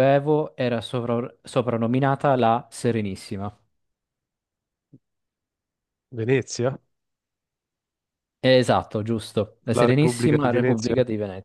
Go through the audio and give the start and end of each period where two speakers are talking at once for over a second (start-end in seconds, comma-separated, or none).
9.7-10.9